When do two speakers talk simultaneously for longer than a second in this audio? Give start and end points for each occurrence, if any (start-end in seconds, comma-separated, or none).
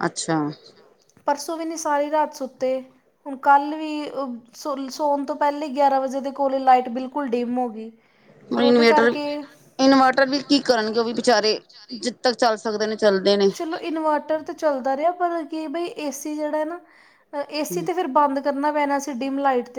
none